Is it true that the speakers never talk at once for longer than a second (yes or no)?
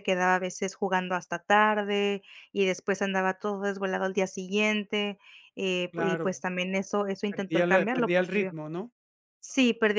no